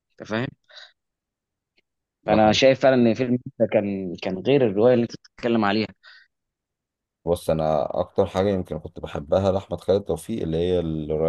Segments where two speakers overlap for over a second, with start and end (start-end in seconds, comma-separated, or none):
none